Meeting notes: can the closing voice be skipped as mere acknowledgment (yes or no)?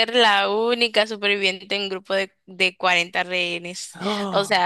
yes